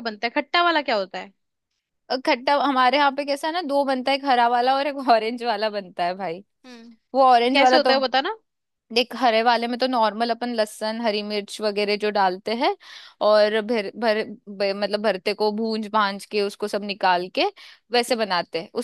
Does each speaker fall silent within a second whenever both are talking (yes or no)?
yes